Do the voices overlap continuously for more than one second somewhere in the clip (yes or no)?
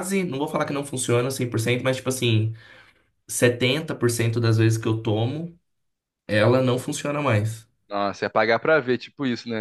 no